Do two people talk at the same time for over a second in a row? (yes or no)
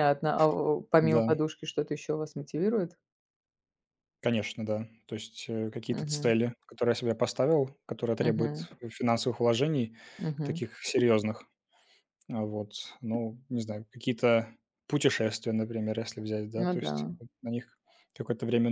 no